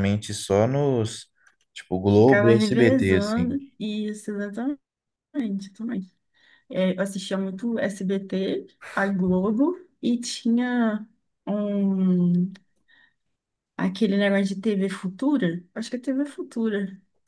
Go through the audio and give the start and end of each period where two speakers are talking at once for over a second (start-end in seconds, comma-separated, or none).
2.1-3.6